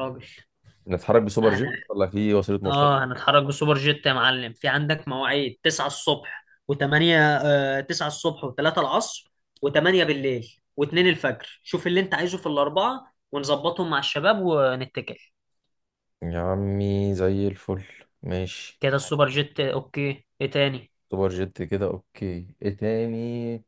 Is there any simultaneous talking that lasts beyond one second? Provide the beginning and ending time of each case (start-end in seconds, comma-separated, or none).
none